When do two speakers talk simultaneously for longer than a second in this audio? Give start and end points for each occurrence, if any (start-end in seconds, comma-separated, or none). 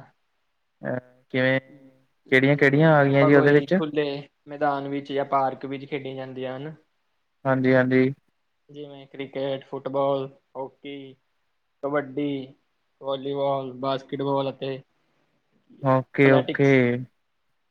2.3-3.7